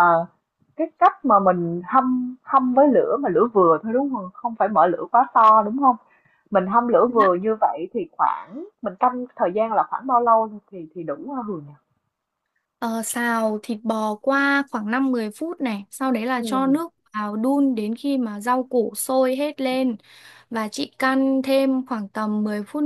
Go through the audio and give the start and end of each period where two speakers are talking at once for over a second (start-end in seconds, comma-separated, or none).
none